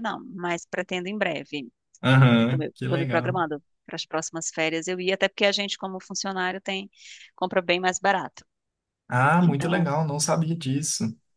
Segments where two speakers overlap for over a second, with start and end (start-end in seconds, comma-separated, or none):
2.2-3.4